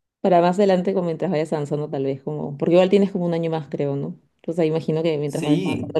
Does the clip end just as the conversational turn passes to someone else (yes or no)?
no